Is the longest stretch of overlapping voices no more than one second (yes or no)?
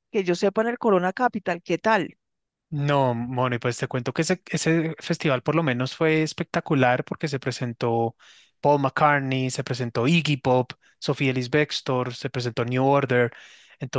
yes